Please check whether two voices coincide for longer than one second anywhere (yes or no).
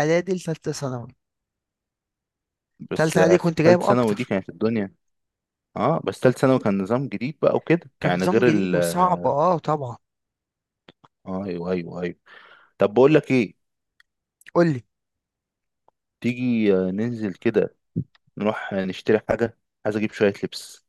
yes